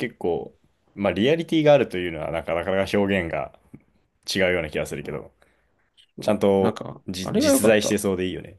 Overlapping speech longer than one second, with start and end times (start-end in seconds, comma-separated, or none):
6.2-8.0